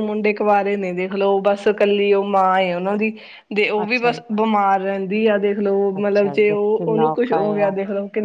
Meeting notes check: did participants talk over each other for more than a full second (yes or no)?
yes